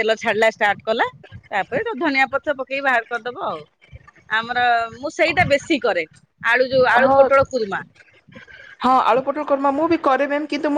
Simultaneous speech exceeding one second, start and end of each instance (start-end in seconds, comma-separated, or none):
none